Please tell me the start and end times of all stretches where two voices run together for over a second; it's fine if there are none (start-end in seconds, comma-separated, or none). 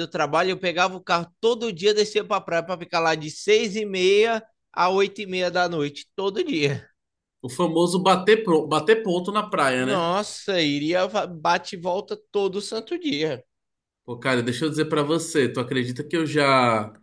none